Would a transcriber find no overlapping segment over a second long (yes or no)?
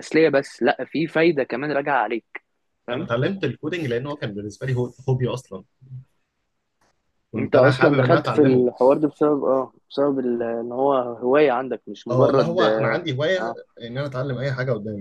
no